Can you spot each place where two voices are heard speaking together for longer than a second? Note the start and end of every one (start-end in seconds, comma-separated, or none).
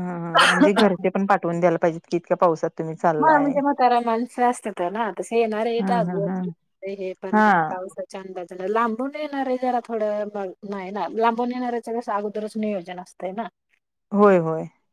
none